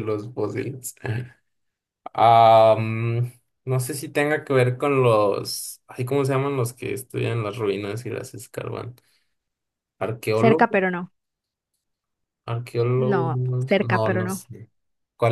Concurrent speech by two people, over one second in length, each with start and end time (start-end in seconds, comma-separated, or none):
12.9-14.4